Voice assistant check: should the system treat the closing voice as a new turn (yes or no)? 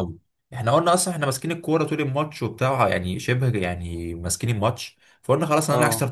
no